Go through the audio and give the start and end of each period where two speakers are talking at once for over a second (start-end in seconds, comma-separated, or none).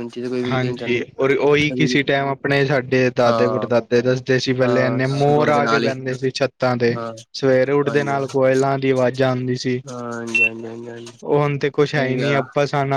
4.6-5.9